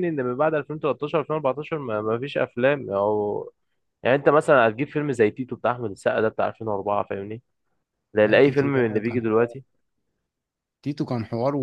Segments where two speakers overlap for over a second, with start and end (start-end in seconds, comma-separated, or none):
8.2-9.6